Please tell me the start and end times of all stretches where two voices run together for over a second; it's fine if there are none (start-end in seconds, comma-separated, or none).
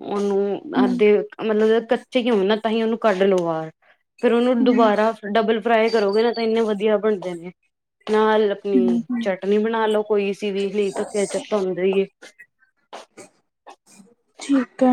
none